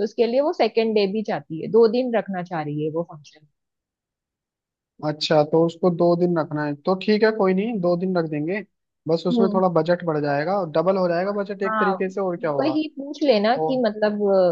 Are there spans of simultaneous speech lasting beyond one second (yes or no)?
no